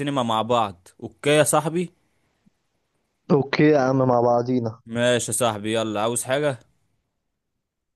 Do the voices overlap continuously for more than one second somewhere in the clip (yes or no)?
no